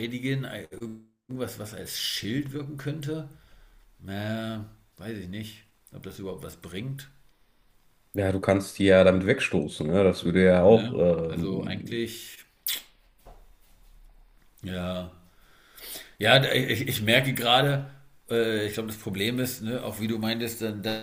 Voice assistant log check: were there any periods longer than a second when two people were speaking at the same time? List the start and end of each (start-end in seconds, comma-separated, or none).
10.6-12.1